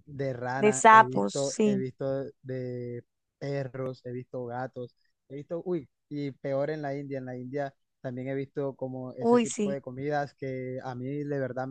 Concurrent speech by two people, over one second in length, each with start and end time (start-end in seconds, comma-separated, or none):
0.5-1.8